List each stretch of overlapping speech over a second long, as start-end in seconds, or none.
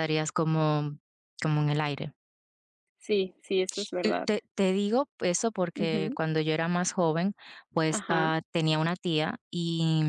none